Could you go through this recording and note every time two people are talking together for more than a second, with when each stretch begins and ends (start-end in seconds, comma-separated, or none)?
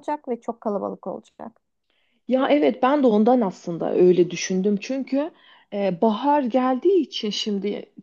none